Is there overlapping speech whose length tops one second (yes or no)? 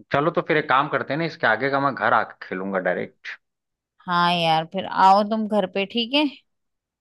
no